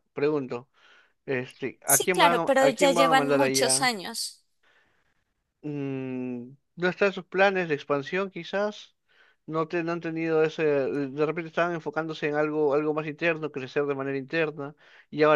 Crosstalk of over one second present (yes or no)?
yes